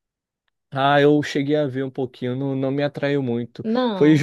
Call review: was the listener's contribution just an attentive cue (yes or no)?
yes